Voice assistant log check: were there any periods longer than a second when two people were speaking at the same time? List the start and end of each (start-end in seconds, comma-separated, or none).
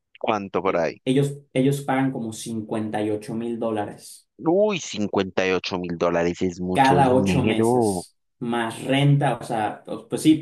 6.7-8.1